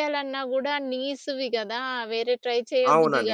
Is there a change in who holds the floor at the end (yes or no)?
yes